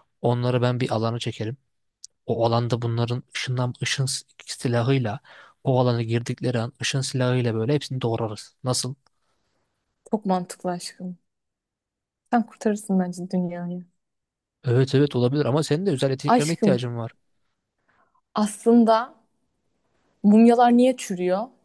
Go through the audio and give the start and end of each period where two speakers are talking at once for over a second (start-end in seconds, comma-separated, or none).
none